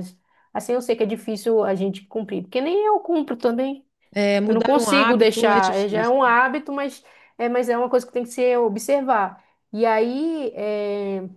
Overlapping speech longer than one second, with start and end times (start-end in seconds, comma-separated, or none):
4.5-6.2